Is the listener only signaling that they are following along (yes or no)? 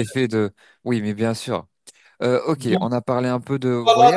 no